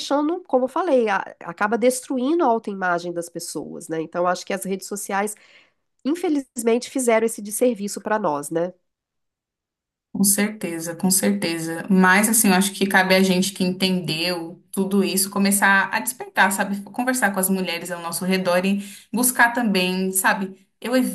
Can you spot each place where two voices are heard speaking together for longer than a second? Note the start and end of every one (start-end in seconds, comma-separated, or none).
none